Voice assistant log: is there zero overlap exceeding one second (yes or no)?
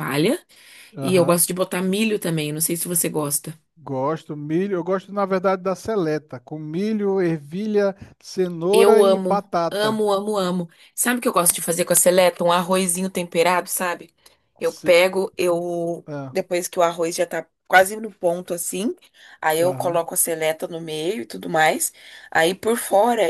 no